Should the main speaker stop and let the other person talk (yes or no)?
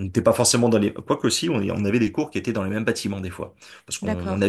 no